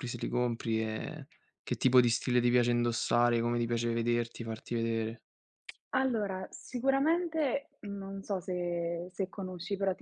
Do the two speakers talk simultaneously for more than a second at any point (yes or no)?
no